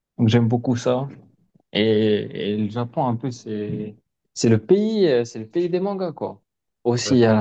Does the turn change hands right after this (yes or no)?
no